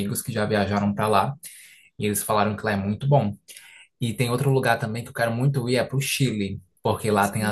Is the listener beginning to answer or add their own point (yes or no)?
no